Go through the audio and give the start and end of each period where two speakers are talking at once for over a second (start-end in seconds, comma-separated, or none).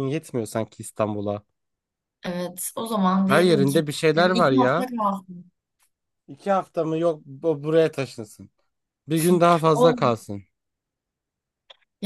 3.2-4.9